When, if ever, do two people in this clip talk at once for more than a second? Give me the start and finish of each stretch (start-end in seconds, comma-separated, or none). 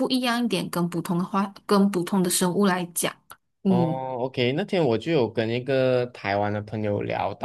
none